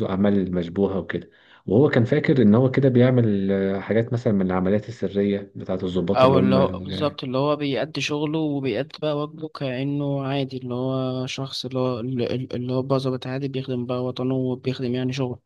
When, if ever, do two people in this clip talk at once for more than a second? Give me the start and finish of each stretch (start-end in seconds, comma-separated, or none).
none